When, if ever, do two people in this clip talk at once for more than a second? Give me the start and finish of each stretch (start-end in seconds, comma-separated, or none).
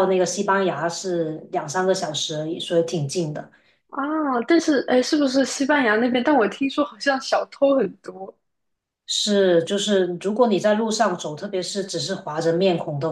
none